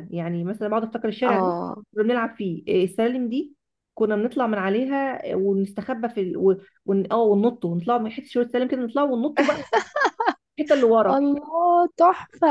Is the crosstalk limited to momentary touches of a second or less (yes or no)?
yes